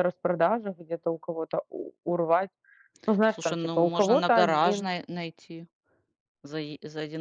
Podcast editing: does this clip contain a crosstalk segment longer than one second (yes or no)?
yes